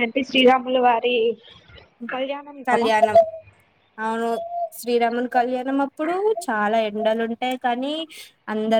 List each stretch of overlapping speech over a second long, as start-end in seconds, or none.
none